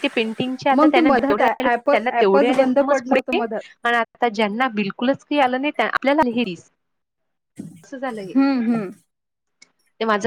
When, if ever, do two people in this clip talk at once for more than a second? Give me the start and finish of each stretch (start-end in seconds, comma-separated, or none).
0.8-3.4